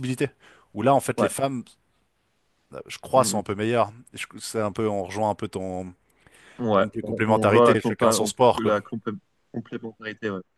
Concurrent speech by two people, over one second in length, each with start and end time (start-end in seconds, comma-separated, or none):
6.7-8.8